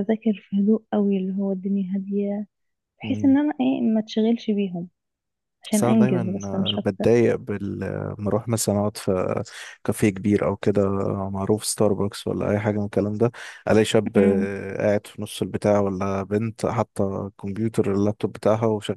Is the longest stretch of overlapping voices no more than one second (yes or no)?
no